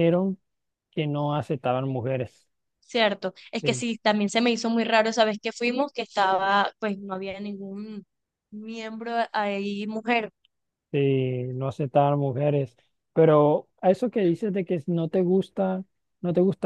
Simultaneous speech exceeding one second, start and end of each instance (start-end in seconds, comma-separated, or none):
none